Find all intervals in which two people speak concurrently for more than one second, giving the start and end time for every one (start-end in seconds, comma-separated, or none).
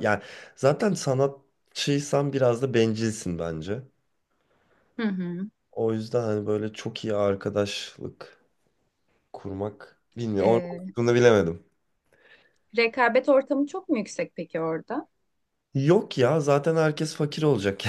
none